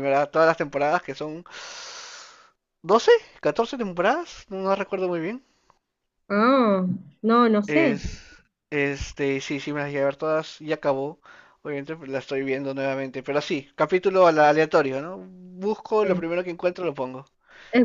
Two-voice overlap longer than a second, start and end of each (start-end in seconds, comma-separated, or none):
none